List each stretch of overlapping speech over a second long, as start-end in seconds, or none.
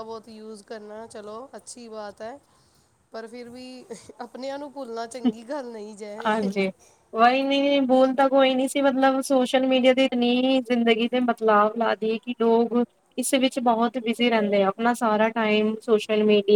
none